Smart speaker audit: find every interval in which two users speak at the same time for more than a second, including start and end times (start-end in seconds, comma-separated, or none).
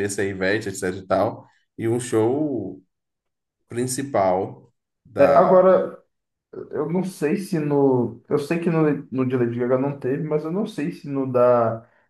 none